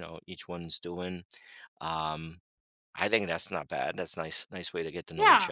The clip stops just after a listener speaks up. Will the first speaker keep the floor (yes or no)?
no